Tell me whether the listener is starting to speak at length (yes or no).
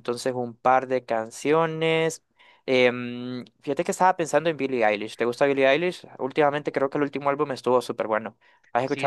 yes